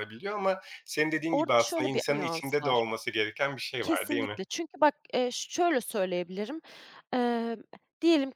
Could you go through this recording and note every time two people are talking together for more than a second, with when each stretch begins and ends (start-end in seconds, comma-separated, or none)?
1.3-2.8